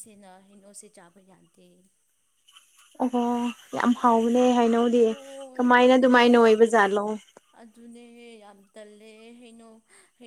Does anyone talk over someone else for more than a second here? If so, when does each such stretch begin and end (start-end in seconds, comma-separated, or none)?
none